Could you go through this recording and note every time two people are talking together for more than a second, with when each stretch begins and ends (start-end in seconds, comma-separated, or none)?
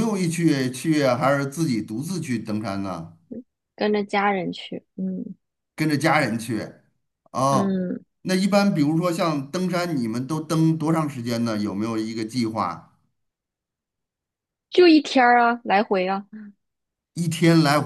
none